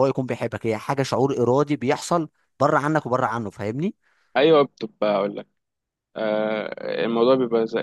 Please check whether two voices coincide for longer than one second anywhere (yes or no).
no